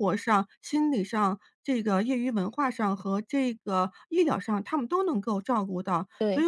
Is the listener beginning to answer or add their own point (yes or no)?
no